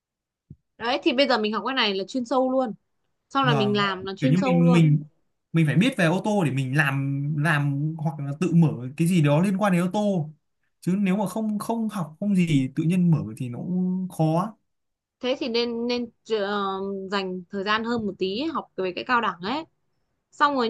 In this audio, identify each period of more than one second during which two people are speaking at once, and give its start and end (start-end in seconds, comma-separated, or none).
3.4-4.8